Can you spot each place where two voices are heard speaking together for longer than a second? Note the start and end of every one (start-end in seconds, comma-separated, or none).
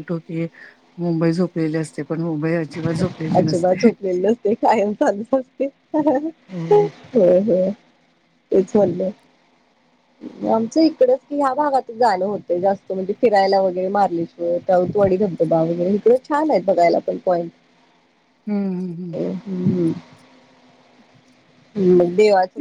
none